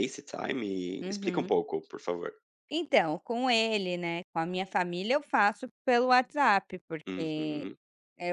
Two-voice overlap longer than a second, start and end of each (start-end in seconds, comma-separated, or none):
none